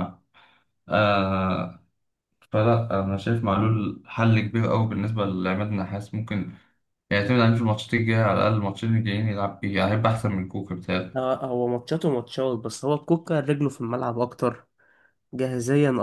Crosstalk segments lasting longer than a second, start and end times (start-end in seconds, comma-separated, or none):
none